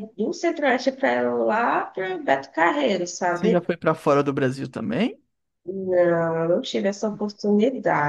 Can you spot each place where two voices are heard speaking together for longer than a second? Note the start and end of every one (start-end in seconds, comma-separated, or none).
none